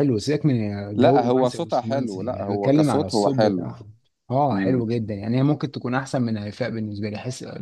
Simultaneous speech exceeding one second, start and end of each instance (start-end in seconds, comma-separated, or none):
1.0-3.7